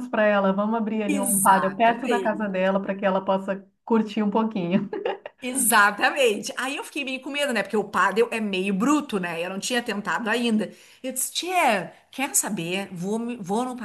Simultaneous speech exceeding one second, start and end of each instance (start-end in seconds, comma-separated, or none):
1.1-2.5